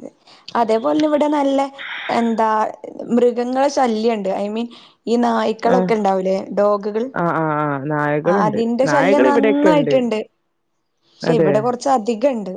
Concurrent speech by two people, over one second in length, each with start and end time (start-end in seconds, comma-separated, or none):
8.3-9.9